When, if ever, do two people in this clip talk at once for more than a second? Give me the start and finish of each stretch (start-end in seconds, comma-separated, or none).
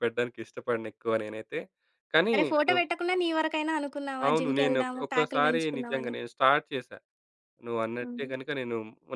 4.3-6.1